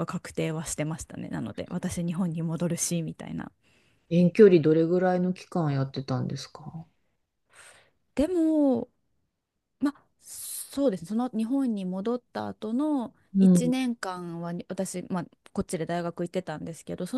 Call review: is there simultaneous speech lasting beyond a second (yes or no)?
no